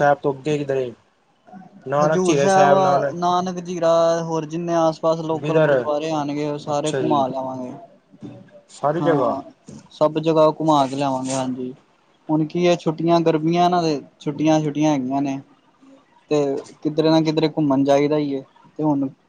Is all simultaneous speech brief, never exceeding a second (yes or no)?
yes